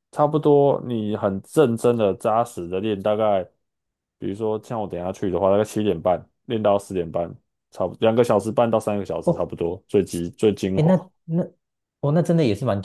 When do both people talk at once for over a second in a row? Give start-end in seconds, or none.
none